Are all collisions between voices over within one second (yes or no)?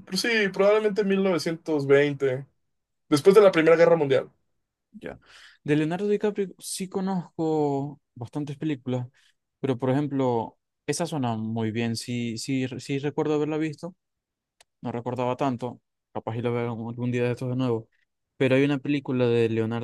yes